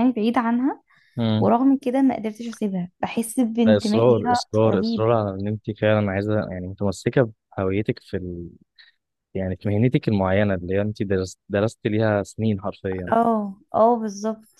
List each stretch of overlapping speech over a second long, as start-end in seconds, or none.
3.7-5.1